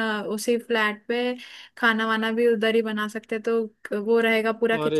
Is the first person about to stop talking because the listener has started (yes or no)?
yes